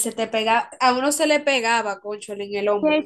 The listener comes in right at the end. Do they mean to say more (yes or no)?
yes